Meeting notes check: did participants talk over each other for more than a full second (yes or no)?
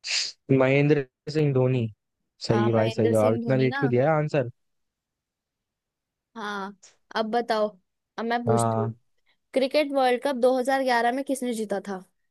yes